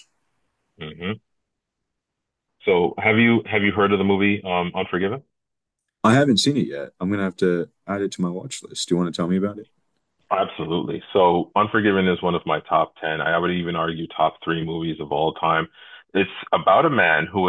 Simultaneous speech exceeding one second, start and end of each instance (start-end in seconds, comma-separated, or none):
none